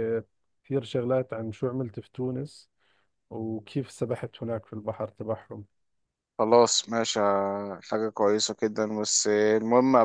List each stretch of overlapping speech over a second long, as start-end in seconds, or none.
none